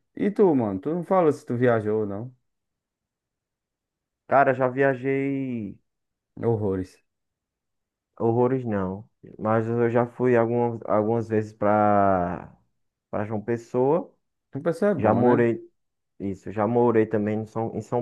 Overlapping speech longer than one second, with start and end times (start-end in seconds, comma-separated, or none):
none